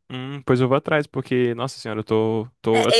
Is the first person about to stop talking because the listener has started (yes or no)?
yes